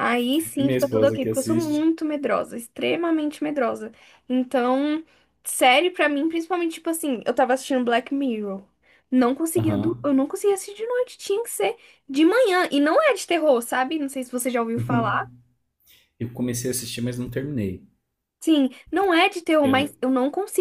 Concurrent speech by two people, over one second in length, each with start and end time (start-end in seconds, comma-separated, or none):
0.6-1.9